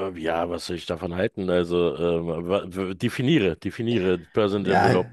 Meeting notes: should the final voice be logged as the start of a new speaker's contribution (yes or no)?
yes